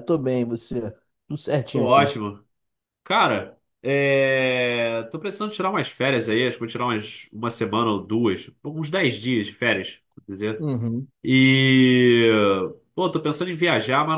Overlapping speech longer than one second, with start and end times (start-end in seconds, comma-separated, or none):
none